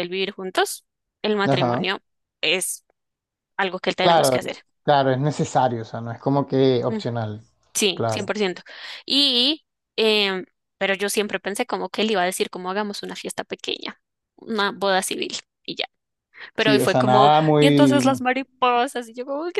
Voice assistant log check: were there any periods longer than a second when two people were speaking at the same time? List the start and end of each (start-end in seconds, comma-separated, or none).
16.6-18.0